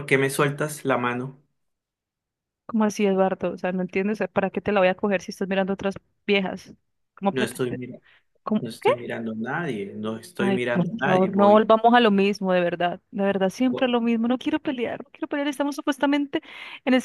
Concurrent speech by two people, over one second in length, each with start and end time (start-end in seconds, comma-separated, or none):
10.4-11.7